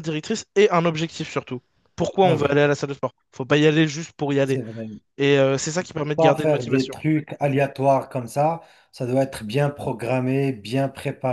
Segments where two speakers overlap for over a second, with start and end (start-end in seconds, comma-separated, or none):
5.8-7.0